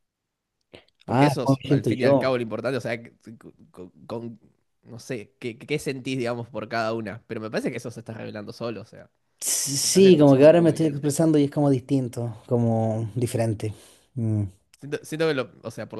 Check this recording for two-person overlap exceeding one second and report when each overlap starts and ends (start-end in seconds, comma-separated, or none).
1.1-2.4, 9.8-11.1